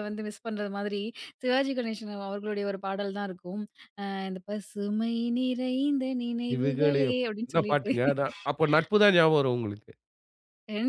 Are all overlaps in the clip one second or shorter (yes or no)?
no